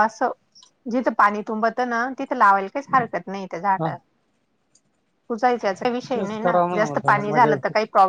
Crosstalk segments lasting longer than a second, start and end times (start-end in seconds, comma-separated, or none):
6.1-7.5